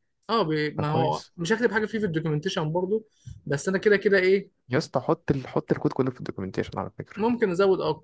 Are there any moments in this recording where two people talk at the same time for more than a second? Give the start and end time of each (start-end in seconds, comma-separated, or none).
none